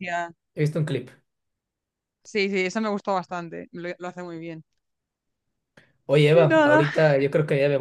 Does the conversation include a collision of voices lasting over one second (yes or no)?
no